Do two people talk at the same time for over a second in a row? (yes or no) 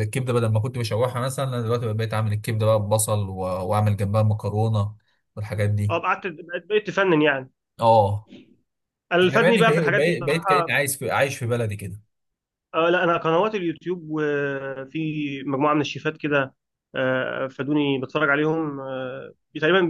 yes